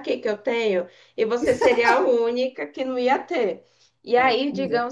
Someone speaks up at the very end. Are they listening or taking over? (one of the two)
listening